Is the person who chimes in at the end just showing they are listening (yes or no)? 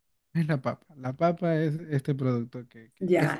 no